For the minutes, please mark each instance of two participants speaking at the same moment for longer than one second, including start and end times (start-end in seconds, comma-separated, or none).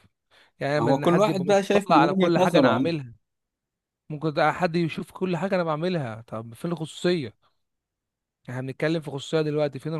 0.8-2.9